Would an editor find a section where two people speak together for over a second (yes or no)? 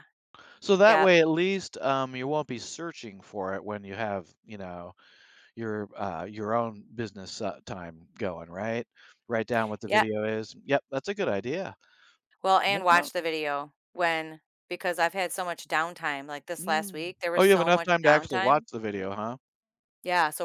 yes